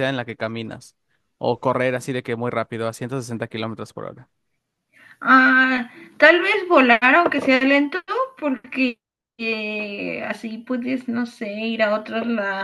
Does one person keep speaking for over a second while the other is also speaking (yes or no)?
no